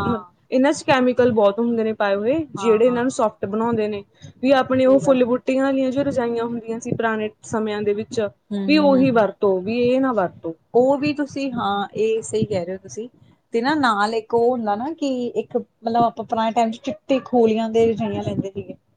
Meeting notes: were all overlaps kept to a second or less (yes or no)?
yes